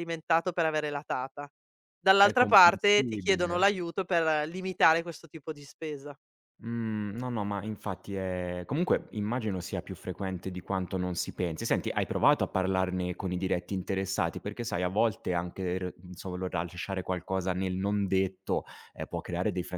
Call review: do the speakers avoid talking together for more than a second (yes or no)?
no